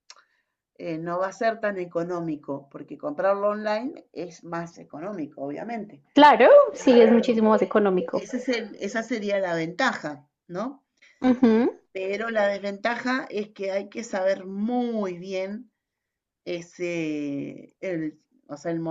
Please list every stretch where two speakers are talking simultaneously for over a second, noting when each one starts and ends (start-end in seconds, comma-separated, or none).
none